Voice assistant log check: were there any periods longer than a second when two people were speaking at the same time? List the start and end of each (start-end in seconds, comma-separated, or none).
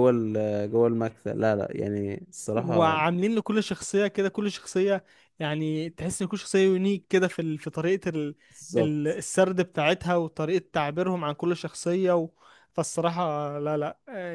none